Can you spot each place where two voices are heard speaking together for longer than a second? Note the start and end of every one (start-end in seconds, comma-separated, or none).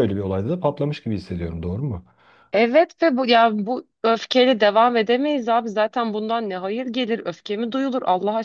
none